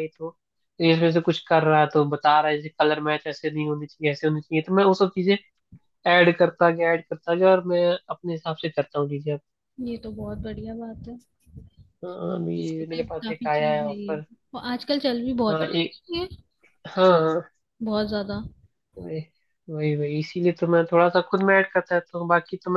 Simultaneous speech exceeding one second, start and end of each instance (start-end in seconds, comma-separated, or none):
12.8-14.2